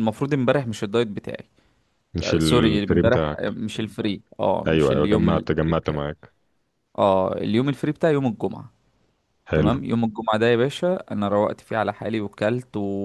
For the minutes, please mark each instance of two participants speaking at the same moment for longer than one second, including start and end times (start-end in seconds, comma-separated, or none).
2.2-3.6, 4.7-6.0